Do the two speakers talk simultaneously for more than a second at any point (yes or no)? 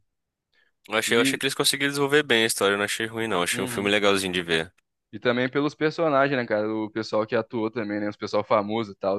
no